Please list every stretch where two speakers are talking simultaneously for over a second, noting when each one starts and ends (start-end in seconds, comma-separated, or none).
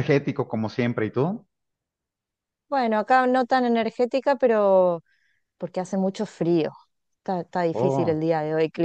none